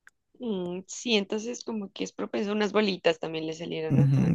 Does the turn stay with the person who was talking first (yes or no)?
no